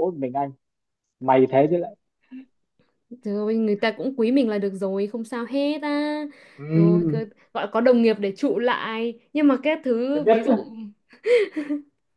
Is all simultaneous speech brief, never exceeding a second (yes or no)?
yes